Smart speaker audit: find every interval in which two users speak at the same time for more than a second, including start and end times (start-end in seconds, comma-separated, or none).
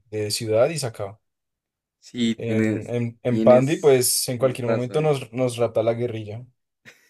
2.4-5.1